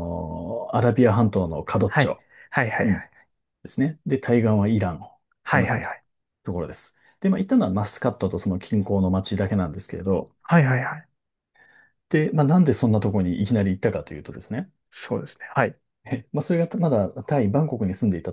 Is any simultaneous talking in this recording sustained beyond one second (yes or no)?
no